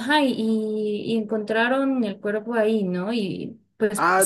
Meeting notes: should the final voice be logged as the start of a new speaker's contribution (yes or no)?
yes